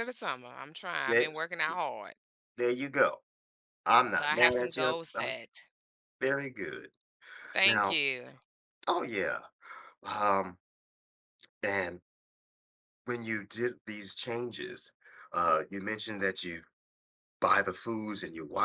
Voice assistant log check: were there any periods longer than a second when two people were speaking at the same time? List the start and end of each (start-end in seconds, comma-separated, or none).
4.1-5.4